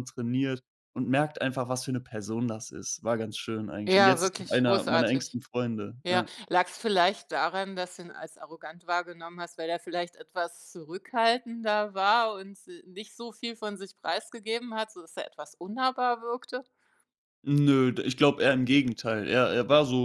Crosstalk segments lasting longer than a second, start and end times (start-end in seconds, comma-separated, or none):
3.9-5.4